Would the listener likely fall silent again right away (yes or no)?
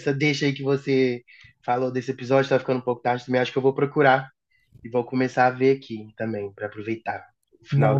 no